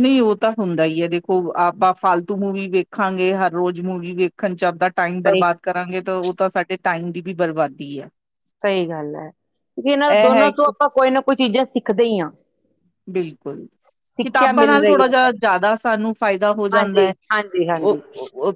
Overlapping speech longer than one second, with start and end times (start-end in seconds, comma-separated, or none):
16.8-18.0